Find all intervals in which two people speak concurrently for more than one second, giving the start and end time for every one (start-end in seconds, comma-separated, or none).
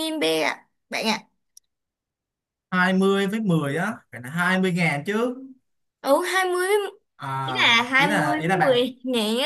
7.4-8.8